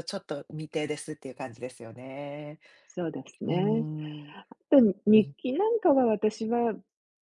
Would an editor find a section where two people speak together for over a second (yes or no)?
no